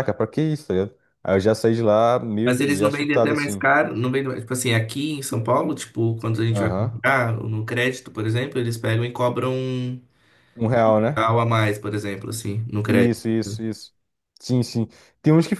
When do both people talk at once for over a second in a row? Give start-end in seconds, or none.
2.4-3.7